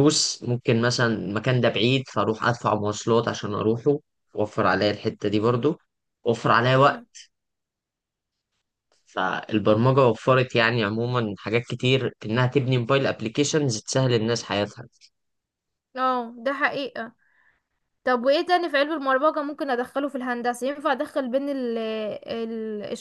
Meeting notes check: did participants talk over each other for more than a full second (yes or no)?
no